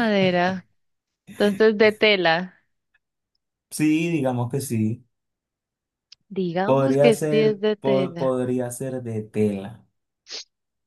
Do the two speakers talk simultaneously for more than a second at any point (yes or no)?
yes